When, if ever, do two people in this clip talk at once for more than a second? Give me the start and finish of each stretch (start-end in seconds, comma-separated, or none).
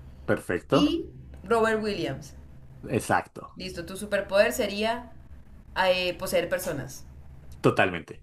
none